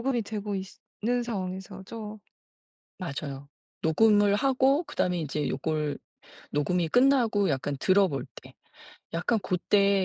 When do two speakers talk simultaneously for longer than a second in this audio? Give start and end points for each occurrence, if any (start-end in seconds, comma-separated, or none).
none